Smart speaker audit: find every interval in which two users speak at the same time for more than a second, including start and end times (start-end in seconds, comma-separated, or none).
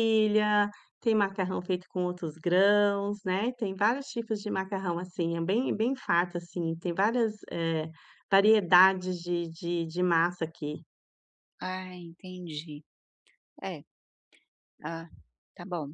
none